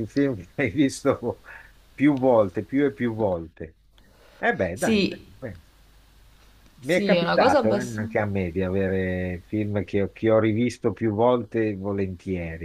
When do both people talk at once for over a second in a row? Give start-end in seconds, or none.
6.8-8.0